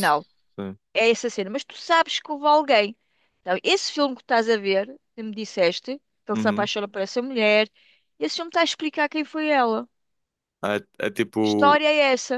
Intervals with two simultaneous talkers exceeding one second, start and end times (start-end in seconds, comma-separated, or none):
none